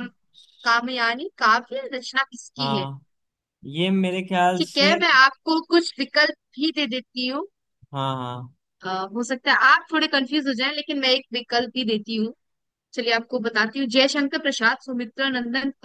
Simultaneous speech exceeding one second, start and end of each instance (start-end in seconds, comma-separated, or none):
none